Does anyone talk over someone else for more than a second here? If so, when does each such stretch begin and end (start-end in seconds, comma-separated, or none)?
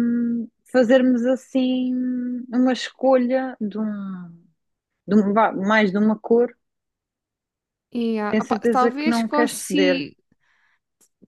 8.3-10.1